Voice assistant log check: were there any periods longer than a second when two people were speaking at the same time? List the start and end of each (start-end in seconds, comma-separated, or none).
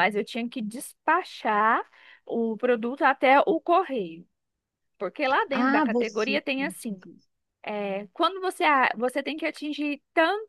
5.5-7.0